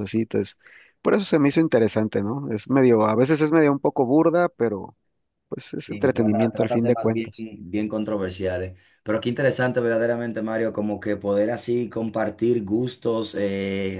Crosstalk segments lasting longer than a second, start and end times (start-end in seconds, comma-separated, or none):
5.8-7.5